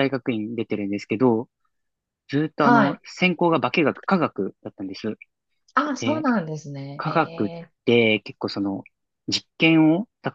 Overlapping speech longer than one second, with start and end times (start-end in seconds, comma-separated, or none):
none